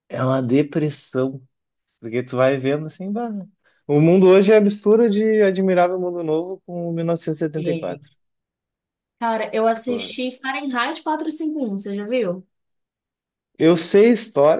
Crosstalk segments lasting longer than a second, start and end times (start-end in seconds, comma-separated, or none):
none